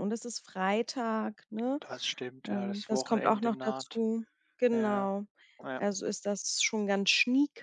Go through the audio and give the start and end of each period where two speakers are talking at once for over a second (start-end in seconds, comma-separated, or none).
2.4-4.0